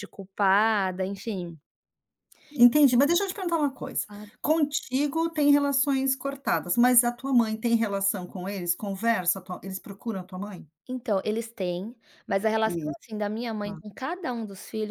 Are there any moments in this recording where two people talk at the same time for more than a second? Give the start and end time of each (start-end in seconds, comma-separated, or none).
none